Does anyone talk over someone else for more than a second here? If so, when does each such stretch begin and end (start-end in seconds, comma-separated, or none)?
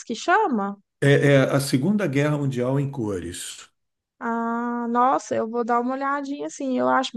none